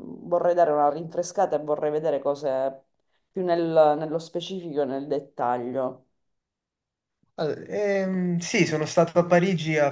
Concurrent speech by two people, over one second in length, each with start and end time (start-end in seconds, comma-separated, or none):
none